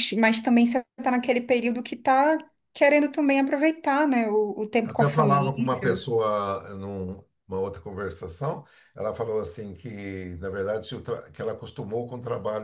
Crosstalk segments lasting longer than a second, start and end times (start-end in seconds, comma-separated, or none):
4.8-6.0